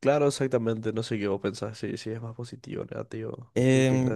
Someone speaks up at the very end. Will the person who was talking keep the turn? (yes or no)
no